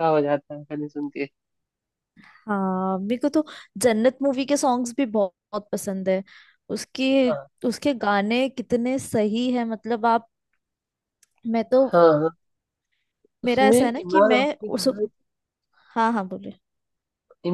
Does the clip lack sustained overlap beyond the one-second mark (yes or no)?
no